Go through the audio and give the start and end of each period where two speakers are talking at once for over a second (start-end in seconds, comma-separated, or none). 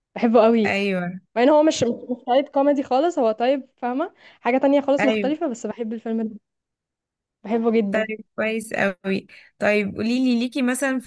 none